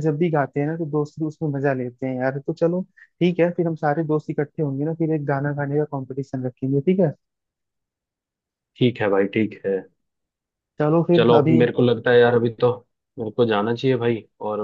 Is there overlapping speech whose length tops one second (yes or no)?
no